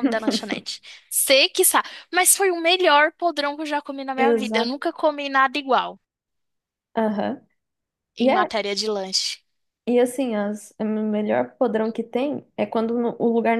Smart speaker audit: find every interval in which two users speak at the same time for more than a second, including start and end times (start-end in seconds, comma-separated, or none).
none